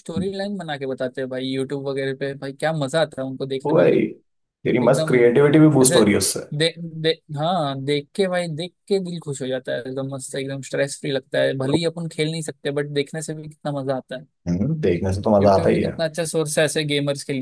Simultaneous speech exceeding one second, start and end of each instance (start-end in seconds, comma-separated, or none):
none